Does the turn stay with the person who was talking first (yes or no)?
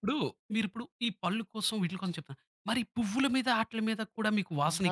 no